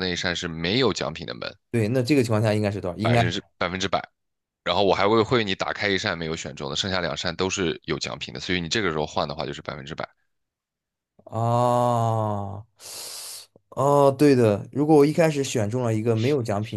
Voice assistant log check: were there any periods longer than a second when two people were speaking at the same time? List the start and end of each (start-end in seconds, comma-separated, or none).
none